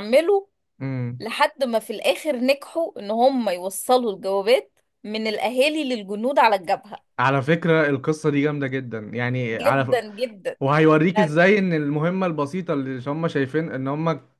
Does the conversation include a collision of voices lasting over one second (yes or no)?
no